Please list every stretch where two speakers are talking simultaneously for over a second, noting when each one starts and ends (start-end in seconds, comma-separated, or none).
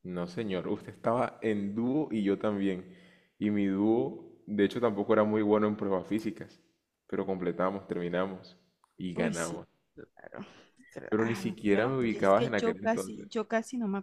11.1-13.3